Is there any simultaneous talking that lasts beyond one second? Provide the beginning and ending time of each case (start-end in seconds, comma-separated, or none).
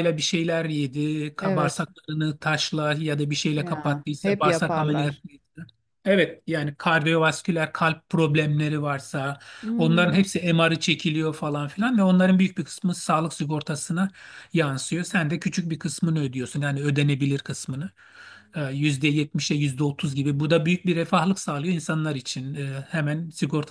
3.6-5.2